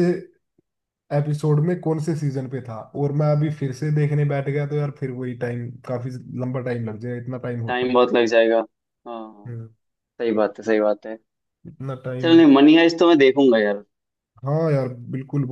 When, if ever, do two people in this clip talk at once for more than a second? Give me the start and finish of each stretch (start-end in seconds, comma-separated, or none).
none